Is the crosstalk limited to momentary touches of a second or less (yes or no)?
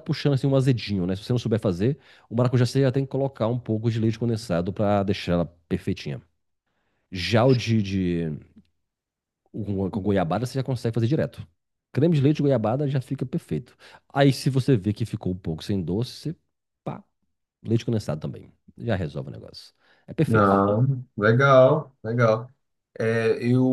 yes